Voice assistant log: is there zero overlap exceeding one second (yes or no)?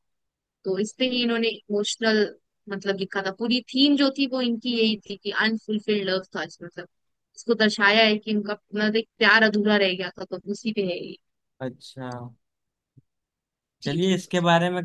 yes